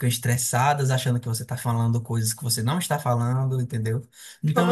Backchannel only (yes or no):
yes